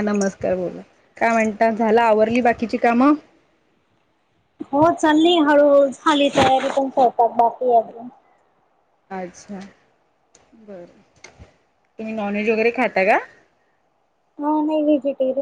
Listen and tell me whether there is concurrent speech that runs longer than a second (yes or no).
no